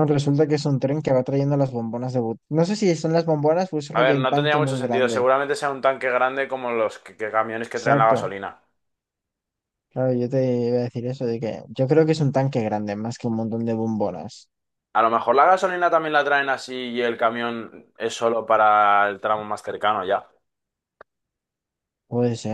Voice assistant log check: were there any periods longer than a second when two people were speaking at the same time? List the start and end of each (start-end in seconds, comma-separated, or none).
3.9-5.3